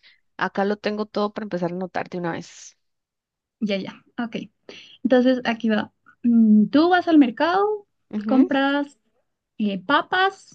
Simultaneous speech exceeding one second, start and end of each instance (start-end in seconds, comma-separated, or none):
none